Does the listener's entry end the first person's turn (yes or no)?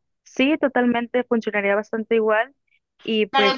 yes